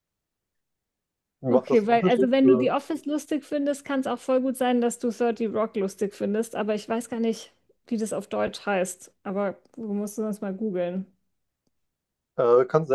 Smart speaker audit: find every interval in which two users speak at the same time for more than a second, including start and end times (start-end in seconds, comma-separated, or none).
1.5-2.7